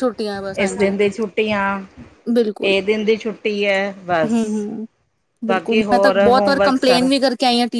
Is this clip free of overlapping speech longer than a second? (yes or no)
yes